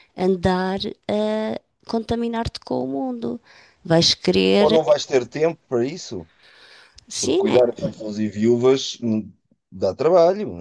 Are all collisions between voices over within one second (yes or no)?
yes